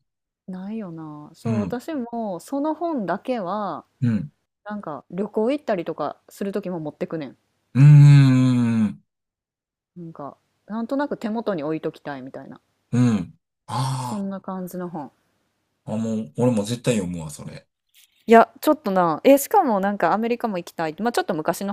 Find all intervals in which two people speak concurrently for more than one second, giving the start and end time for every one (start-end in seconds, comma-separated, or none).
none